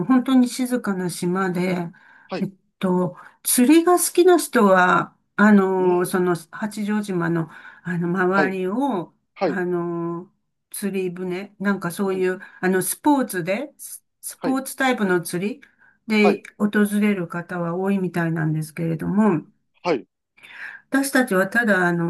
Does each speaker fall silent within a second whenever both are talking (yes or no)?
yes